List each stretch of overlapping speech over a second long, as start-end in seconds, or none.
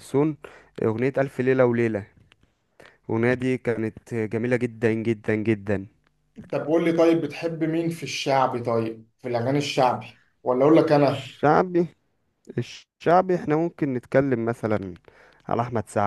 none